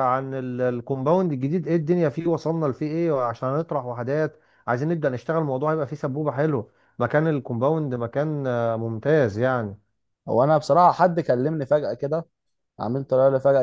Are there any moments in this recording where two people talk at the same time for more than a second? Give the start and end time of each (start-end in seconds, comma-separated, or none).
none